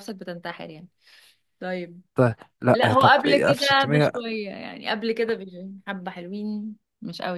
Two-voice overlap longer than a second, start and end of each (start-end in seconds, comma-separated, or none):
2.7-4.1